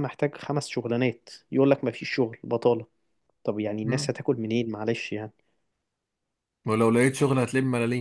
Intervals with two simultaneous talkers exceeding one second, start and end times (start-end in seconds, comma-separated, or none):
none